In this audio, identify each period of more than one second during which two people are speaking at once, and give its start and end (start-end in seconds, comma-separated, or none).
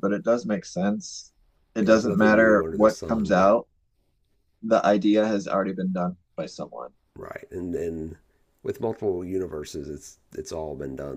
1.8-3.5